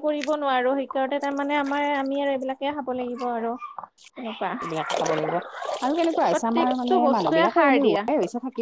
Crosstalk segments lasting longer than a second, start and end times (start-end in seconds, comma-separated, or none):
6.3-8.0